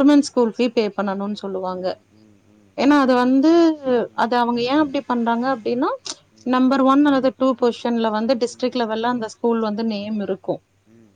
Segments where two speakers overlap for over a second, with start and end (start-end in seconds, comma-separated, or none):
8.5-10.1